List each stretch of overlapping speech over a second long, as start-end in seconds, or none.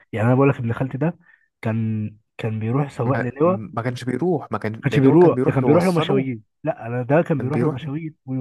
4.8-6.3